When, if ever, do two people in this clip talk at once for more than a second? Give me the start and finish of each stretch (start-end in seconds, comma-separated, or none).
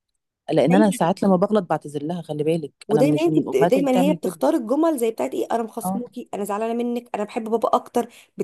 2.9-4.4